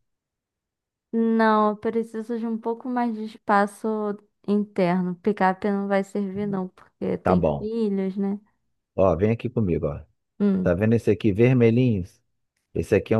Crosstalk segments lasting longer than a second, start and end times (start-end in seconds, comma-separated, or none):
none